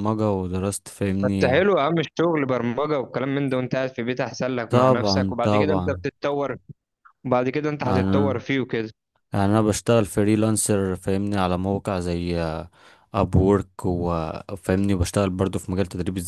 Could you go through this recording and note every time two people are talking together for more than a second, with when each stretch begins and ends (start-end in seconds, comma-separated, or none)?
4.7-6.0